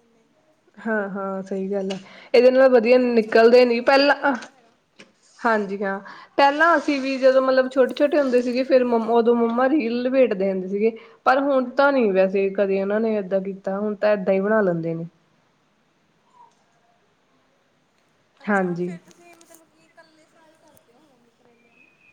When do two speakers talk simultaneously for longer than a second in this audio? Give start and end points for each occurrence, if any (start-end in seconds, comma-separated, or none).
2.9-4.5